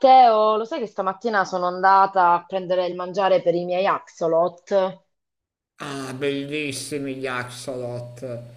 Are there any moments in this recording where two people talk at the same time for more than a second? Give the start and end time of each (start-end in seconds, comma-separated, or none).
none